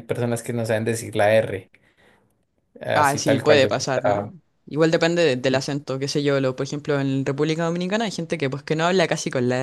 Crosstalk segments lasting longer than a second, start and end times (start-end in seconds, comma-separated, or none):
2.9-4.3